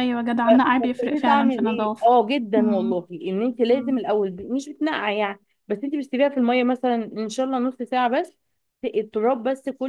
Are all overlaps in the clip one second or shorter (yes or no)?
no